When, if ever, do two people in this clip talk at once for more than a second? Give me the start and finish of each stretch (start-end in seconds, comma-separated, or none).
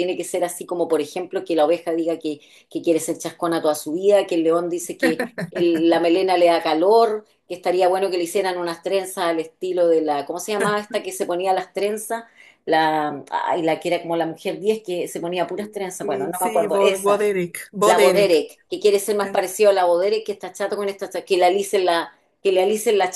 16.0-17.2